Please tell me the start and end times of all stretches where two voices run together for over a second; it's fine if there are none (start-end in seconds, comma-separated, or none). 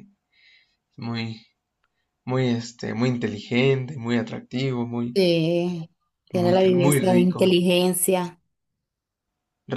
6.3-7.6